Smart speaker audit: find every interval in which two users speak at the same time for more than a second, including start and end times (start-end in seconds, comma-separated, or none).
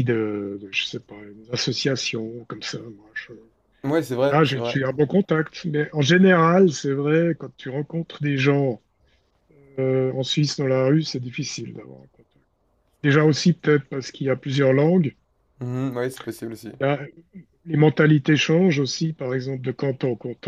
none